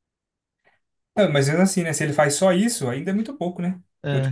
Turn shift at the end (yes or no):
no